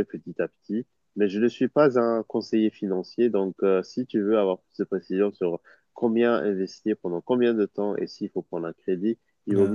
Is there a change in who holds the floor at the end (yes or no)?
no